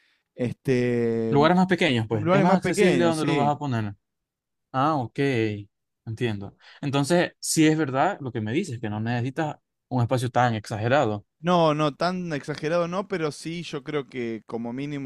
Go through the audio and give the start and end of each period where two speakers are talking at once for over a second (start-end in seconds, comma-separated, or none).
2.1-3.5